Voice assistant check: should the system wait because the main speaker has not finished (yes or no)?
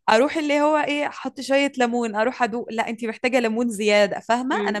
no